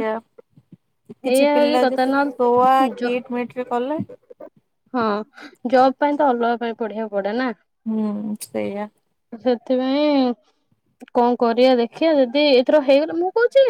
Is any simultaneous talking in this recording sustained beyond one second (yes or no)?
yes